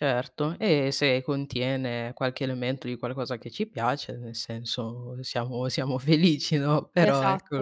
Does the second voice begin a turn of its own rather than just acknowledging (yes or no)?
no